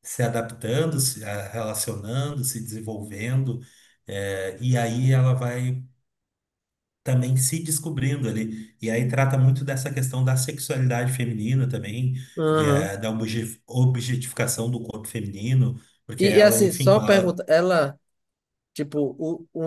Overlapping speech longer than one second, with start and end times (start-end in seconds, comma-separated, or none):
16.2-17.4